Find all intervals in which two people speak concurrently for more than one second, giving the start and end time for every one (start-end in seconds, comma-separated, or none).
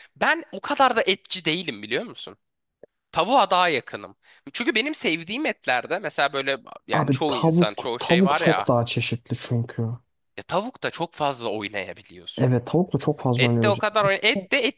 6.9-8.7